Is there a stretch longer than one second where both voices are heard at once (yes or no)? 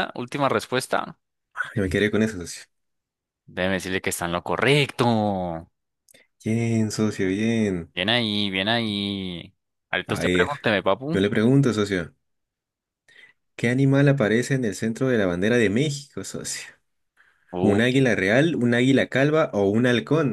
no